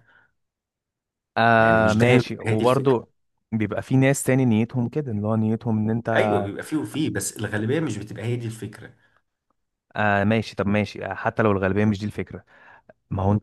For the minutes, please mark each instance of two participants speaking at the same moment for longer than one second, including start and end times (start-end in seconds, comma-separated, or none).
1.6-3.0